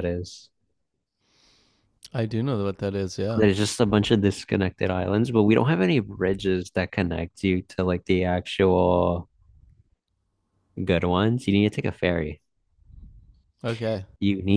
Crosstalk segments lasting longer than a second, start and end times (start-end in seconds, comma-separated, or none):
none